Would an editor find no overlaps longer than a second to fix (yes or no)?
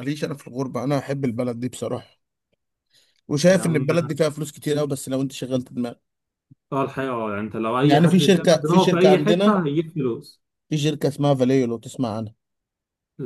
no